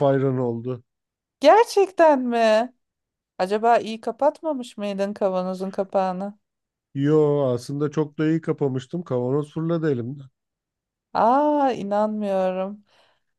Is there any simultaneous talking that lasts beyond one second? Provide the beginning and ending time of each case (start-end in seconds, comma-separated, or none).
none